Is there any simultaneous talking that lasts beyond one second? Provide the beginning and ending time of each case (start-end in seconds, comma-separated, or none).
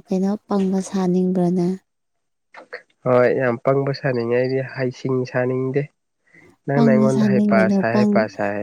6.7-8.1